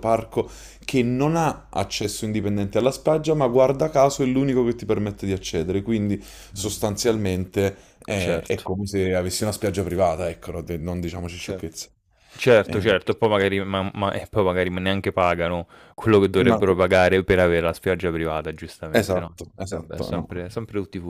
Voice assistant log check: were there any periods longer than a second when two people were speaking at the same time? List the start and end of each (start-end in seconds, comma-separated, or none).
18.9-20.3